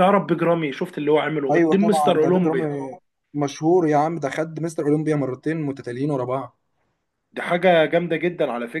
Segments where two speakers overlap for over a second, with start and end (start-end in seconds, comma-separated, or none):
1.5-2.7